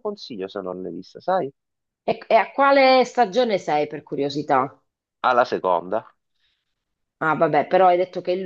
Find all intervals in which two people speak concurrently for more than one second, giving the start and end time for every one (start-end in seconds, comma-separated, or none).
none